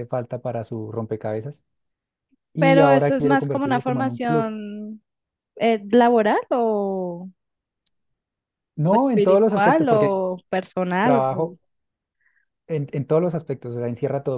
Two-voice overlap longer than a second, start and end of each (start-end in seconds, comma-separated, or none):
2.6-4.5, 8.8-10.1